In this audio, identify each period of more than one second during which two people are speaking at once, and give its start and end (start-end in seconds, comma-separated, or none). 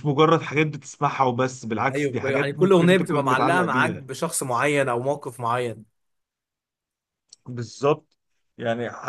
1.9-4.0